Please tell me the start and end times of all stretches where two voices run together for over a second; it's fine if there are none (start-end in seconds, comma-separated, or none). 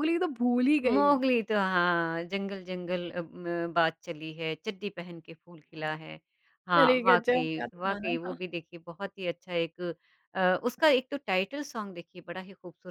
6.7-8.4